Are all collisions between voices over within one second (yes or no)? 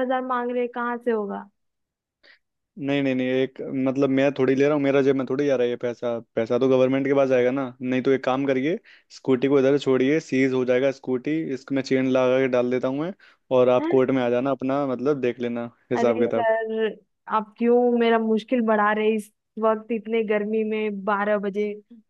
yes